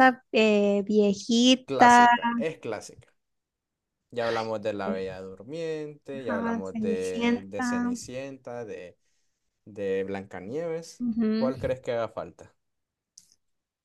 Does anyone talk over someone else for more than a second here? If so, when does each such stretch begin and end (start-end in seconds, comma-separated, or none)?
6.2-7.9